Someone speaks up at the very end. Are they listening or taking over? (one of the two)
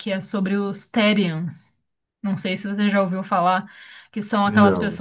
listening